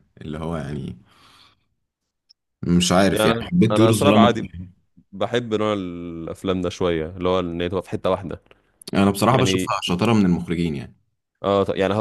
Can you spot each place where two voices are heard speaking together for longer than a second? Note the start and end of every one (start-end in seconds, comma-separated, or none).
3.1-4.5